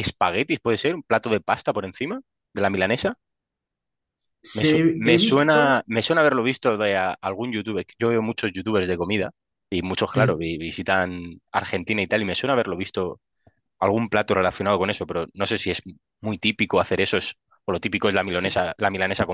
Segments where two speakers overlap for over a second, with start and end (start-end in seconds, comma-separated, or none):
4.5-5.8